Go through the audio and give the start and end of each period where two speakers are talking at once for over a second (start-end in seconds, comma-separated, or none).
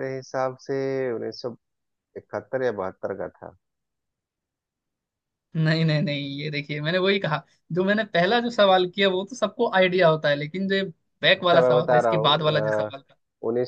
11.4-12.9